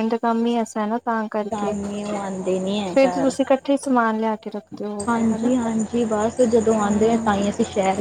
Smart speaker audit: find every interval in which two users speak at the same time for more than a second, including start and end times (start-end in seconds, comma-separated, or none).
none